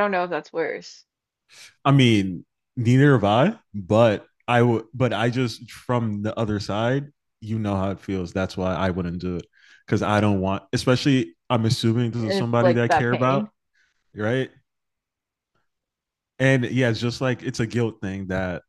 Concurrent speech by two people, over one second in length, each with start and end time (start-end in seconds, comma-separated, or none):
12.2-13.5